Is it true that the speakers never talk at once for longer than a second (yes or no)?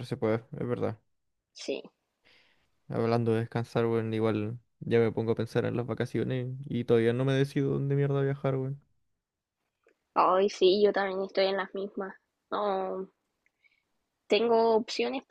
yes